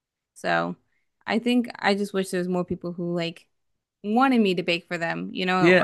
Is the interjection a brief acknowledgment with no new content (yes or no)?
no